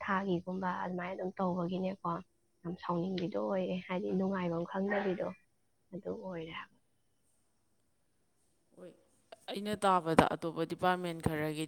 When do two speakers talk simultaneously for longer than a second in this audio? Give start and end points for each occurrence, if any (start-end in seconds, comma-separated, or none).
none